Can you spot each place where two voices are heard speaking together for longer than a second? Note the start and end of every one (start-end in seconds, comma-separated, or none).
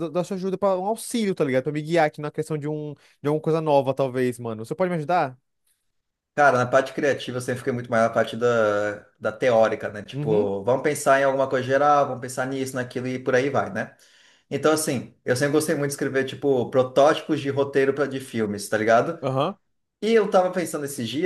none